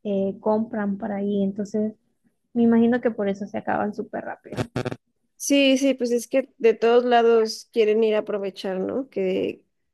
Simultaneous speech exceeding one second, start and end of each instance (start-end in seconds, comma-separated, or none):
none